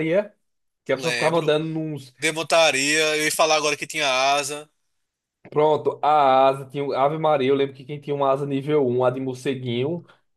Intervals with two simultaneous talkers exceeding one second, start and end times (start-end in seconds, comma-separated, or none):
none